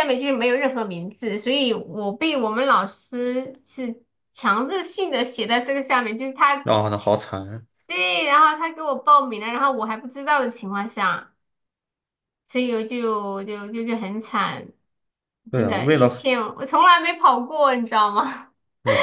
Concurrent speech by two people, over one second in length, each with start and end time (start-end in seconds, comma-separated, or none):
none